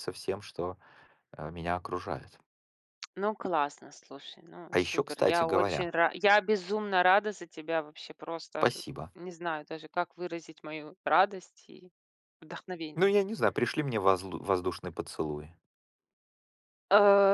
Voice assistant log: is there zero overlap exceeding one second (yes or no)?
no